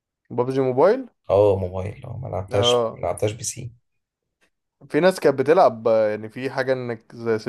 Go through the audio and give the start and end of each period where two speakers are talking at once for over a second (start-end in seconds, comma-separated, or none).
none